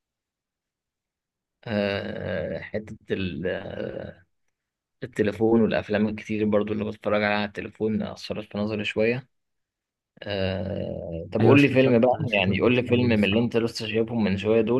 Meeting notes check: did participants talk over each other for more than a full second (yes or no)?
yes